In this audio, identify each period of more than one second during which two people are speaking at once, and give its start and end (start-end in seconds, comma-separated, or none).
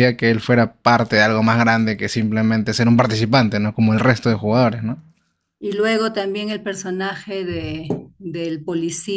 none